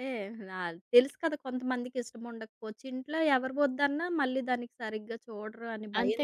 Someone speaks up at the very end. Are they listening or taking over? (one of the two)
taking over